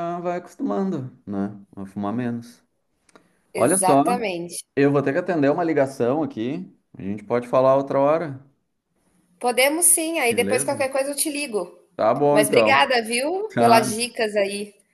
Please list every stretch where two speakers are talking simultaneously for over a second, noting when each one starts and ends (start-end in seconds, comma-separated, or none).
none